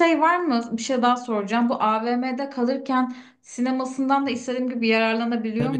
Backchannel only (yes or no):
no